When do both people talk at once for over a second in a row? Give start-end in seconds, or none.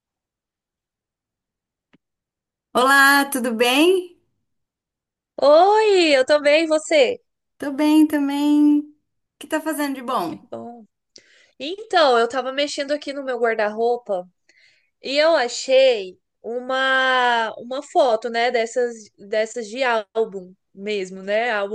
none